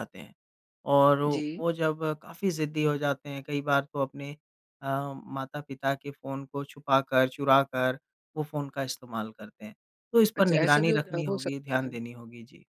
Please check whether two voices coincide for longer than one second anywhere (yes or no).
yes